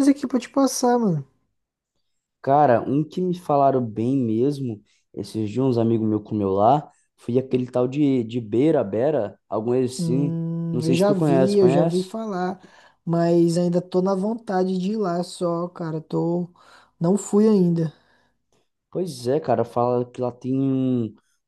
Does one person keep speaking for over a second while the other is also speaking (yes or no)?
yes